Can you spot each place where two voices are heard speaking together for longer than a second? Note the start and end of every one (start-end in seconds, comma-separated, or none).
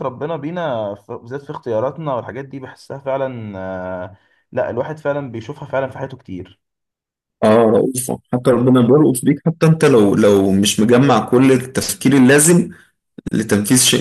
none